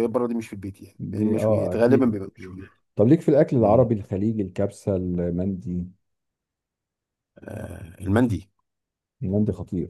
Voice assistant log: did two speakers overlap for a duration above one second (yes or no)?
yes